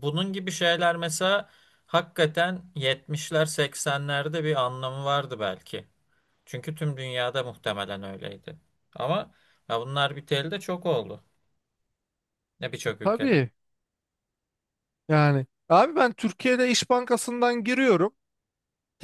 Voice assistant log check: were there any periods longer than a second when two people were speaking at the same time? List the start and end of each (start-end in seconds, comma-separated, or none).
none